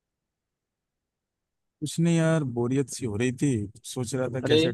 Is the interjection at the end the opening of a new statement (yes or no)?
no